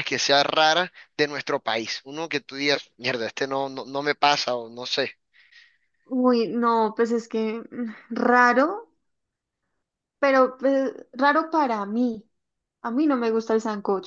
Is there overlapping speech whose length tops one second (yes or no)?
no